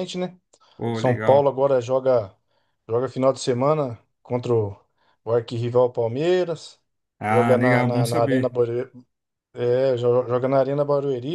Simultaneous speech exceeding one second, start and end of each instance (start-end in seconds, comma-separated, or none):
7.3-8.6